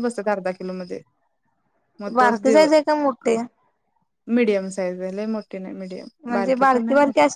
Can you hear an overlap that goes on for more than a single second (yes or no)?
no